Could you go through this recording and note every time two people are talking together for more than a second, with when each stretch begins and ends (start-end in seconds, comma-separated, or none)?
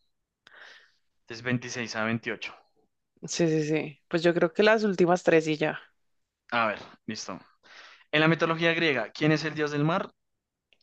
none